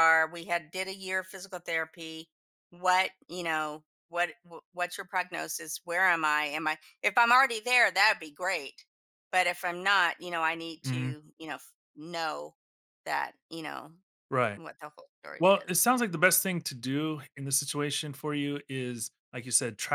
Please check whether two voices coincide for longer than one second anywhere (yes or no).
no